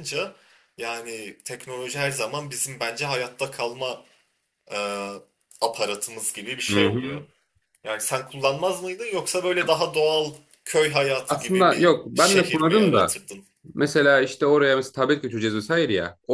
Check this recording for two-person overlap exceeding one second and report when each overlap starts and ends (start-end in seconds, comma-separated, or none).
11.3-13.2